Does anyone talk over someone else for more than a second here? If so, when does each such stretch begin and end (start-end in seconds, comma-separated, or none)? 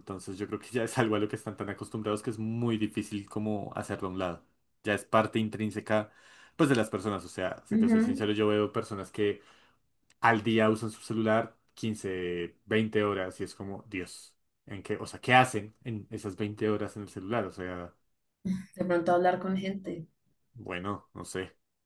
none